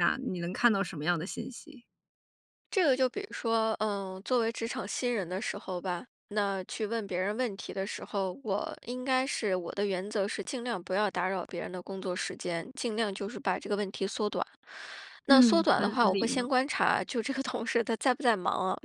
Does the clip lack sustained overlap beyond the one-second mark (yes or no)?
no